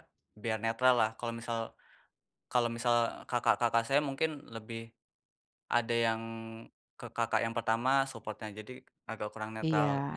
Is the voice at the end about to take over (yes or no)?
yes